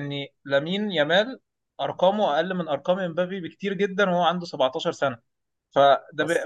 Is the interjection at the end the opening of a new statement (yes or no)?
no